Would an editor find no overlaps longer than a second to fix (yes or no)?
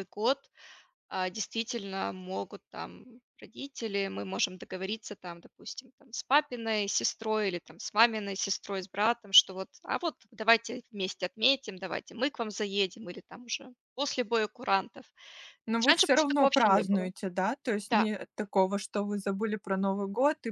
no